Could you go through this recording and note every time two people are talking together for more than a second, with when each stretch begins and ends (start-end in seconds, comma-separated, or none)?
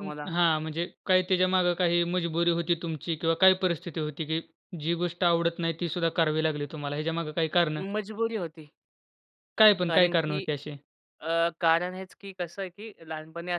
none